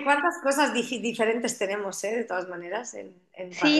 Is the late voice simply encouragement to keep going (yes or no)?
no